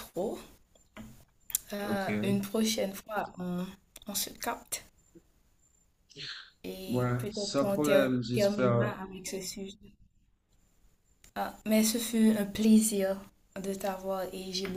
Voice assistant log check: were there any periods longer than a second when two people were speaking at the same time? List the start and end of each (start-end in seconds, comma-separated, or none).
6.8-9.0